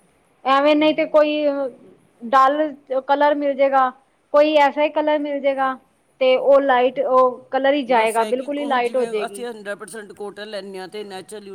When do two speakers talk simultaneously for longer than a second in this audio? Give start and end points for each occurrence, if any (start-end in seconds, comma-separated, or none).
7.9-9.4